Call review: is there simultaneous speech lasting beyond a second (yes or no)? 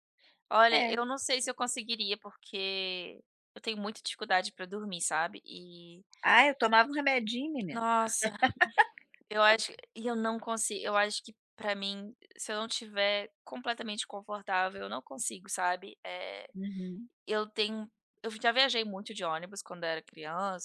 no